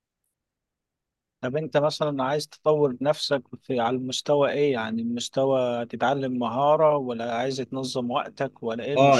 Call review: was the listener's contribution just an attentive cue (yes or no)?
no